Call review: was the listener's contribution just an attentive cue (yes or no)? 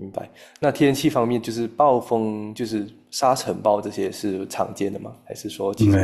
no